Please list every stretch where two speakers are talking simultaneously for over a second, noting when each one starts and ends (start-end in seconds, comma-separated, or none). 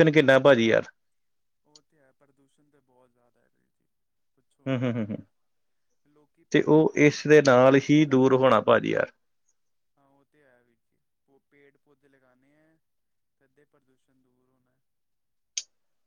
6.5-8.3